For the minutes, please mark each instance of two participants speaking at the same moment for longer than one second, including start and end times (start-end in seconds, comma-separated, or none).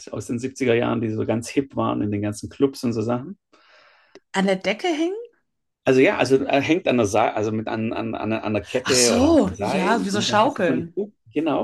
8.8-11.0